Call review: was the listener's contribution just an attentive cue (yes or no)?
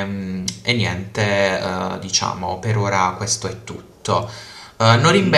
yes